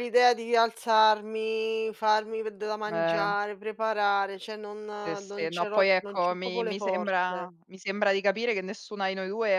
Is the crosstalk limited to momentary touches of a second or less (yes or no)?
no